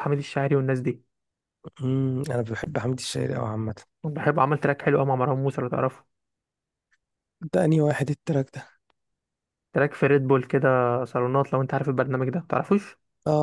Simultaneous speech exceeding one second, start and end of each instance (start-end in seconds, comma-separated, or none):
none